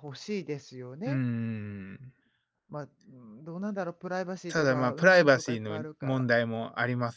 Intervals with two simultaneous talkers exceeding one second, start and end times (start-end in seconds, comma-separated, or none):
4.5-6.3